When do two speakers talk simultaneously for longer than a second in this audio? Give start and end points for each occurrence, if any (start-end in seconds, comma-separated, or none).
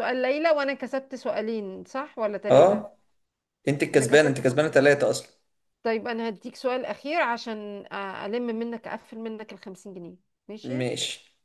none